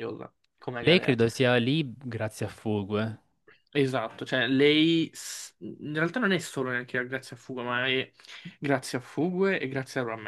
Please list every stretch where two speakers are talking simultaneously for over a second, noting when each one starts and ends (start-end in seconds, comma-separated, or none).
none